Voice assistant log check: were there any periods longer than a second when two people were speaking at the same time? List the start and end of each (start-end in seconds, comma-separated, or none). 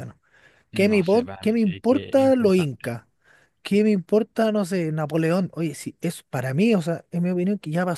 0.9-3.0